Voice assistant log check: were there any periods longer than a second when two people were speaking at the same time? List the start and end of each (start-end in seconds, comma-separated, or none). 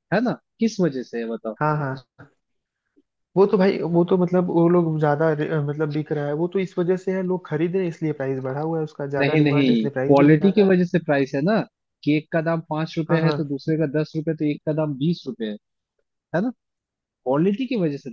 9.2-10.7